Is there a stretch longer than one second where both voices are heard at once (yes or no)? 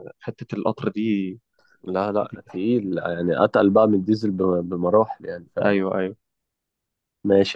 no